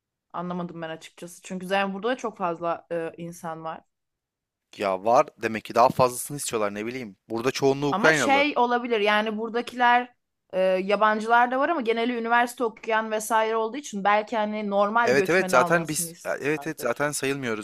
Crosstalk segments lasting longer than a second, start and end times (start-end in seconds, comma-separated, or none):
15.0-17.1